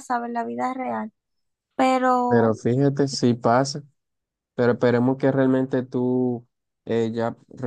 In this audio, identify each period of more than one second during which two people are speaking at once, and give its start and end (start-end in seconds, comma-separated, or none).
none